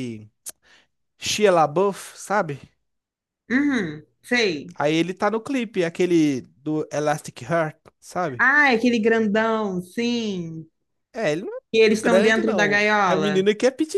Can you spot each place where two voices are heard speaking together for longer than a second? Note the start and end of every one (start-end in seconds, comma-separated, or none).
11.7-13.5